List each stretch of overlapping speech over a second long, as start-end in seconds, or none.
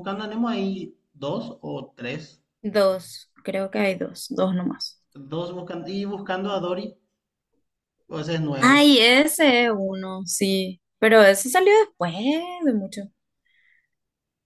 none